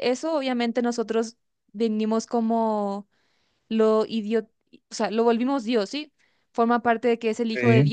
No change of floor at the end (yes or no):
yes